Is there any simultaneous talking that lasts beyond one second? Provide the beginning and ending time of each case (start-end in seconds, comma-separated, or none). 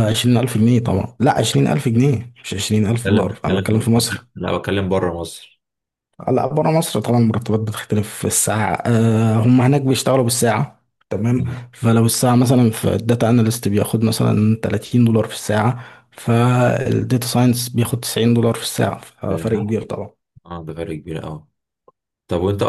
2.9-4.2